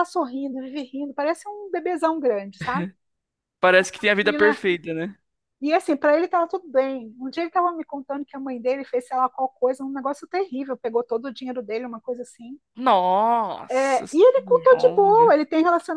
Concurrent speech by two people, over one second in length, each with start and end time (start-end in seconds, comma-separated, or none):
13.7-15.4